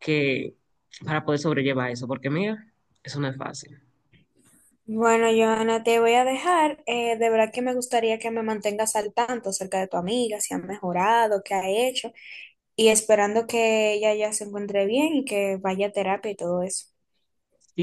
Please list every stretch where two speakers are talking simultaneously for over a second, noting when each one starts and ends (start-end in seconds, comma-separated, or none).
none